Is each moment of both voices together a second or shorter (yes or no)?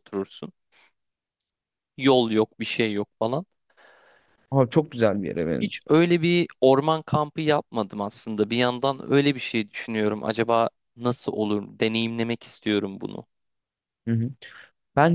yes